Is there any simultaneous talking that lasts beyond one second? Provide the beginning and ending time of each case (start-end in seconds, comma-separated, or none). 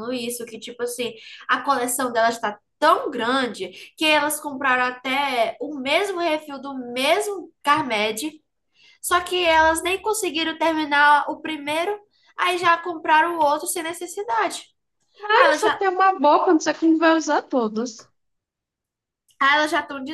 none